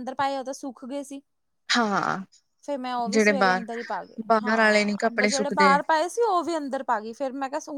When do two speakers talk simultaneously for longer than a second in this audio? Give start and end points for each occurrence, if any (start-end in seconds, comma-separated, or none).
4.3-5.7